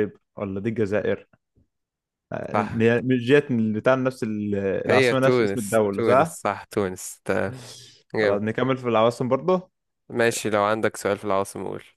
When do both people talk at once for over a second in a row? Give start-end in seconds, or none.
4.9-6.4